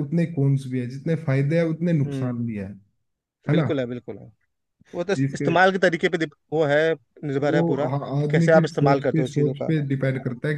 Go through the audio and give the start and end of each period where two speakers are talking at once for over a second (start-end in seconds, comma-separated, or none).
7.4-9.7